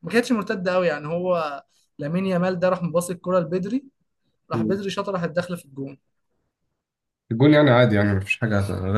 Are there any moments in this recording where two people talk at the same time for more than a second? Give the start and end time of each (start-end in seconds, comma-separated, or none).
none